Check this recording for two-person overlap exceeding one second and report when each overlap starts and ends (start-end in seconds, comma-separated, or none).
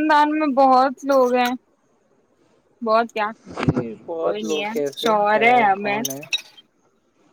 4.2-6.0